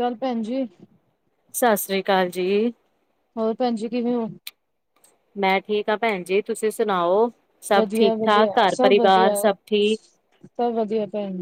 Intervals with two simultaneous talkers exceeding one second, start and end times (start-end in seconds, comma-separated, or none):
7.8-9.3